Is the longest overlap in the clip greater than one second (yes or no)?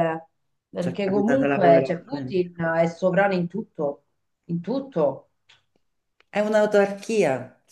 yes